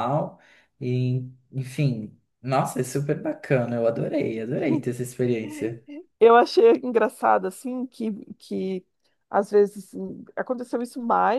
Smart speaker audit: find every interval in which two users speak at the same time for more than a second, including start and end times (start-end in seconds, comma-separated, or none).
none